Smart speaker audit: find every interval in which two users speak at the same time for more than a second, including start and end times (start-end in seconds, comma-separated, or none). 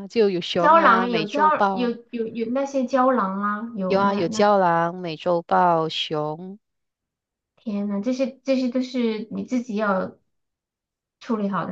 0.6-1.9